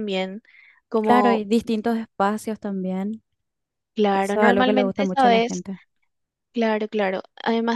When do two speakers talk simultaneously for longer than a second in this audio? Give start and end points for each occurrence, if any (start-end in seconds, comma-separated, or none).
4.1-5.6